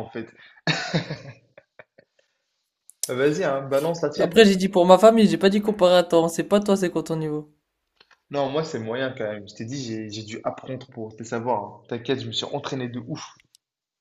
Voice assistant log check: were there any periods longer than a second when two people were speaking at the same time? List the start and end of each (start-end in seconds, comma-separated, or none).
none